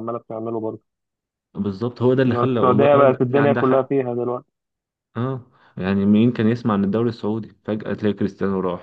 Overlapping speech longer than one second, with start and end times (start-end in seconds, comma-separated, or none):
2.3-3.9